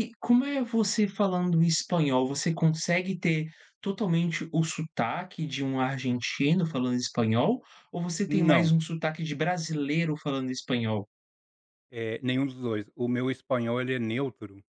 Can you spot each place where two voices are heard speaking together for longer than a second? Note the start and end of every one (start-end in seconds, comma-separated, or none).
none